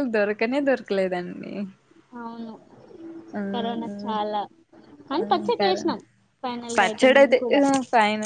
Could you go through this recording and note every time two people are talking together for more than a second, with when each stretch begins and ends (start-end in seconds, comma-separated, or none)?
none